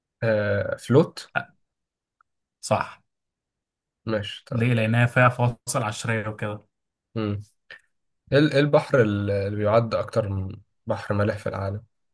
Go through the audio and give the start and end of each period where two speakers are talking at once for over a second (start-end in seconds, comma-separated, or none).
none